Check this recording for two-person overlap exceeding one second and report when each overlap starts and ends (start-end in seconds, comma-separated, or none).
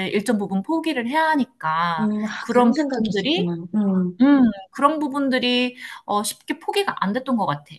2.0-3.5